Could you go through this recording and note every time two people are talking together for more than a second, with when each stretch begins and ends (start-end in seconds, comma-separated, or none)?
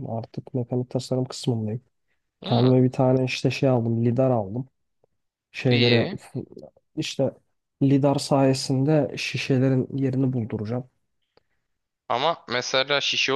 none